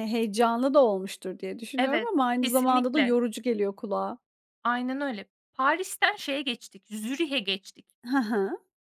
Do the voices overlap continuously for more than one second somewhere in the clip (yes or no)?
yes